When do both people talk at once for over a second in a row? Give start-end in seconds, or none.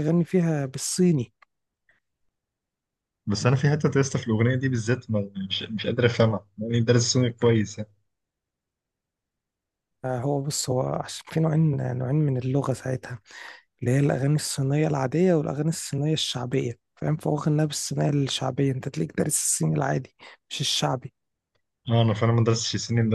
none